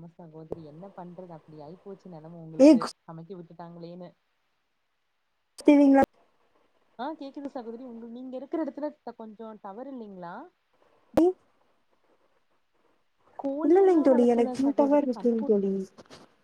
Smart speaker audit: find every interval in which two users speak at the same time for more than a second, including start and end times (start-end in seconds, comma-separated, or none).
13.7-15.6